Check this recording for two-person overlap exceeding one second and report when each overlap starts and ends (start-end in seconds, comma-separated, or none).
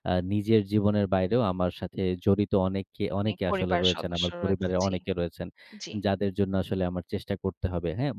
3.2-4.9